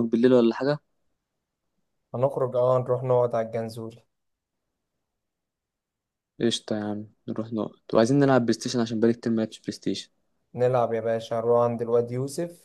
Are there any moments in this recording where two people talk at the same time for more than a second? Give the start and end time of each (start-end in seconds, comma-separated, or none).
none